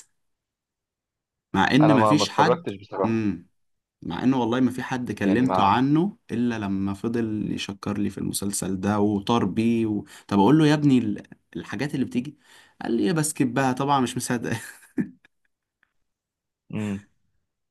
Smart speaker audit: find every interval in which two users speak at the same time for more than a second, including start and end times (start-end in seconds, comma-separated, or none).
1.8-3.2